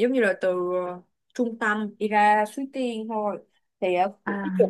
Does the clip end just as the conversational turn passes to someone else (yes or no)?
no